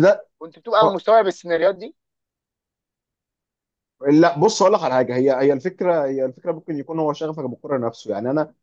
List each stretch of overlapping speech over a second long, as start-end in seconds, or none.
none